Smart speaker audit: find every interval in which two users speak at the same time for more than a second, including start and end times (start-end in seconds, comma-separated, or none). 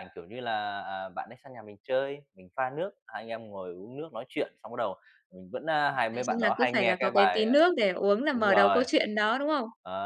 6.1-7.5